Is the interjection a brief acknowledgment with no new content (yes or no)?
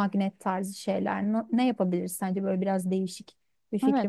no